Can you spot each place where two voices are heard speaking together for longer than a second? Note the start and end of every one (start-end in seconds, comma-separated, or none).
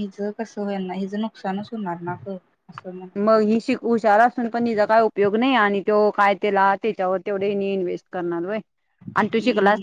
none